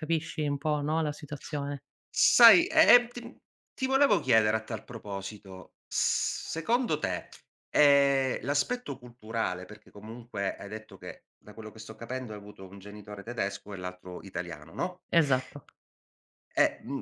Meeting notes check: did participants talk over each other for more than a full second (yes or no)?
no